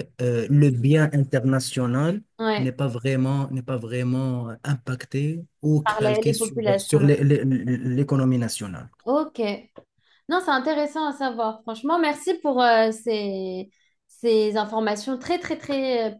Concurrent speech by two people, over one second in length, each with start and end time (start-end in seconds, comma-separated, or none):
5.8-7.1